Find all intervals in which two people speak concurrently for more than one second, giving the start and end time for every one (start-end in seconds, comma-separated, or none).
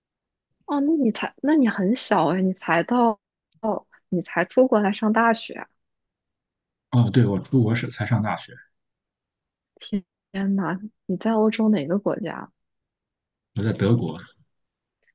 none